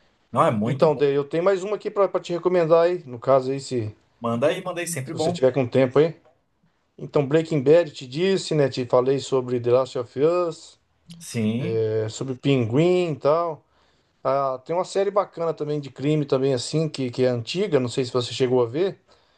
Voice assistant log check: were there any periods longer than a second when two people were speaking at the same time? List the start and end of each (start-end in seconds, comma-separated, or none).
none